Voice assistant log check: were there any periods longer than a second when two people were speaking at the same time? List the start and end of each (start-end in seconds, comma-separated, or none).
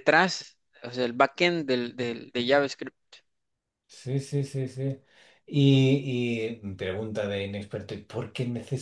none